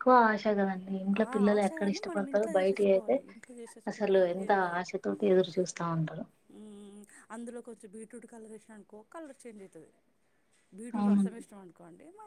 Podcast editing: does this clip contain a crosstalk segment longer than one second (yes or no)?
yes